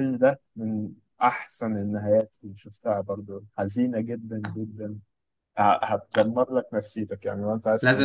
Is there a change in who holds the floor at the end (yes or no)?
yes